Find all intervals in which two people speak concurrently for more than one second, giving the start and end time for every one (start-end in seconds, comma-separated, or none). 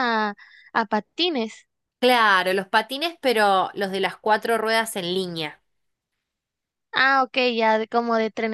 none